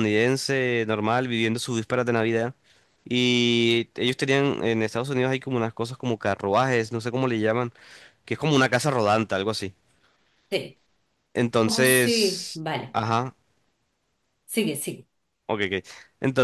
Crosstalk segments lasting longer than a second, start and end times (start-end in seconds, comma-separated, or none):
11.6-13.0